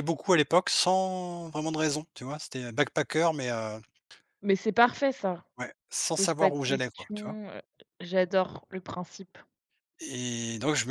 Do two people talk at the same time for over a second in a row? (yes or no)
yes